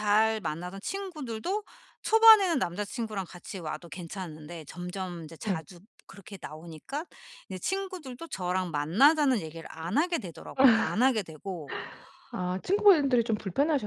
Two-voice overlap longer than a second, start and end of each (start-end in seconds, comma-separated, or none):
none